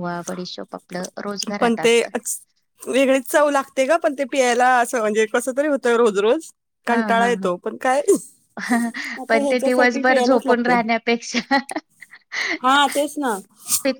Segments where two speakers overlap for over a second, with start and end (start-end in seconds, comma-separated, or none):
9.3-10.7